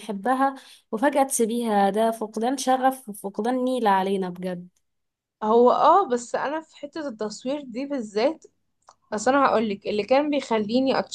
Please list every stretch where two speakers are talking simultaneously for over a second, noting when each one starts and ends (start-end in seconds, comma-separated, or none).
none